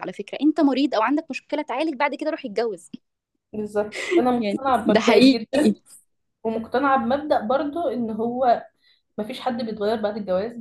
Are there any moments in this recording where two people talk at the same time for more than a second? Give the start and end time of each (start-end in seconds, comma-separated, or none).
4.4-5.7